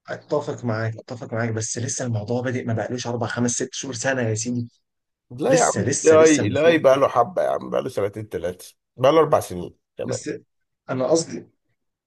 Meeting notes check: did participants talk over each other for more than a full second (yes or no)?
yes